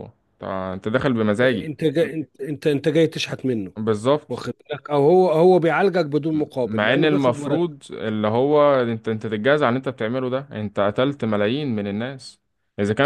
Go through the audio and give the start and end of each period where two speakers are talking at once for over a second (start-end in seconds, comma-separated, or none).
6.3-7.7